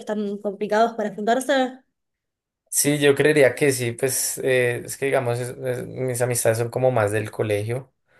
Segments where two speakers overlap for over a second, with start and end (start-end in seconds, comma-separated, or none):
none